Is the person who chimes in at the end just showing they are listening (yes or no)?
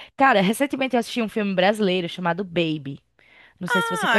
no